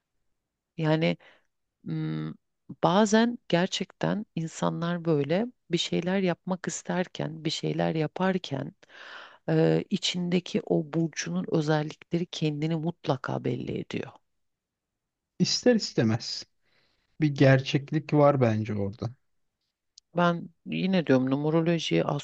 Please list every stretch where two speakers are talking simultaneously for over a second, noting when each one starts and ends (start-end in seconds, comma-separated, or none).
none